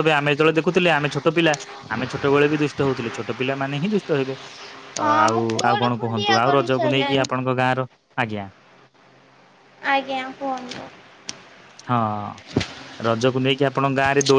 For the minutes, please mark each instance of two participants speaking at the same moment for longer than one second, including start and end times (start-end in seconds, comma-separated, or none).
5.0-7.2